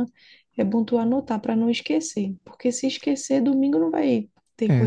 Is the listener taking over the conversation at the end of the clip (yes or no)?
yes